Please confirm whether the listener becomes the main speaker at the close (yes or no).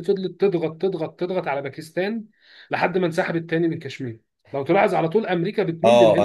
yes